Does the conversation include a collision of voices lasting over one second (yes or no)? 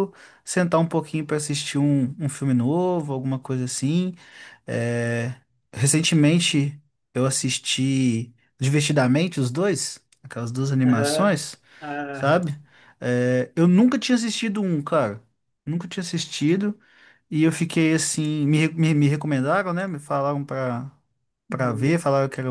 no